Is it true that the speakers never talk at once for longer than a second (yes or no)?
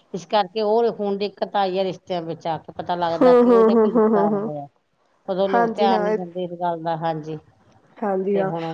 no